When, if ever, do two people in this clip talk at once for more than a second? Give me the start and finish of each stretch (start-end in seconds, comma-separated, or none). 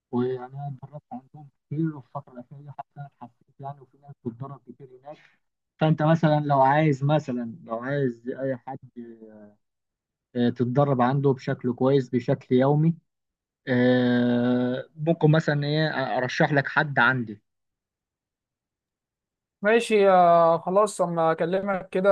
none